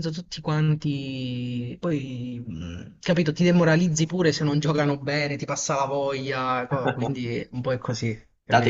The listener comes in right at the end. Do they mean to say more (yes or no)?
yes